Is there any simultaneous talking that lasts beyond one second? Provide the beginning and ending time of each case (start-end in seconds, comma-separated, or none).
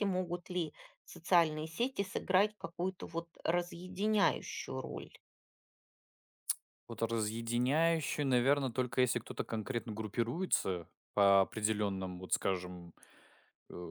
none